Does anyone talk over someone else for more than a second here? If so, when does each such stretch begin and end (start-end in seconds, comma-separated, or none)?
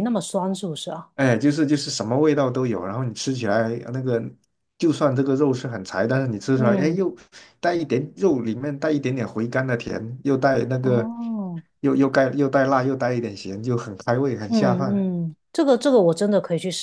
none